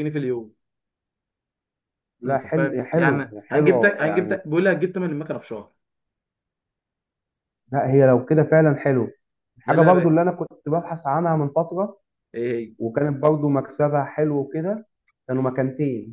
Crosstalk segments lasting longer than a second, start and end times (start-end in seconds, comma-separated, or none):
2.2-4.4